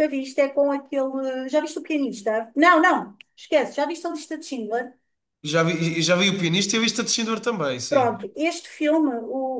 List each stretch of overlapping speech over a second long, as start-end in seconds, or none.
none